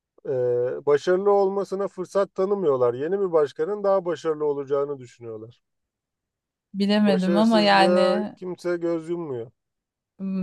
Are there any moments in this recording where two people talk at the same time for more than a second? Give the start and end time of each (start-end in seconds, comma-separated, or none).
7.0-8.3